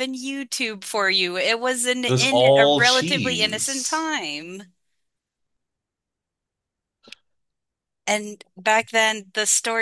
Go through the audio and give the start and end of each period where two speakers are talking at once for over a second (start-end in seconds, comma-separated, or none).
2.1-4.1